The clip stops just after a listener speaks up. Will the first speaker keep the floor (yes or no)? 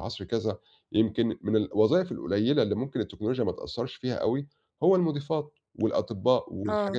yes